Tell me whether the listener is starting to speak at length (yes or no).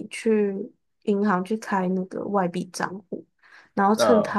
no